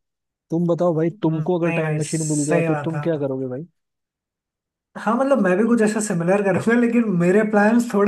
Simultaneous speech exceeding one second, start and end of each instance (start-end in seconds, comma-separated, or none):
1.1-3.2